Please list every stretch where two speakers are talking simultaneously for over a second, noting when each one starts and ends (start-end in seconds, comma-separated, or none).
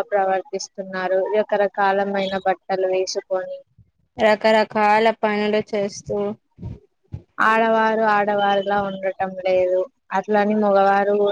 none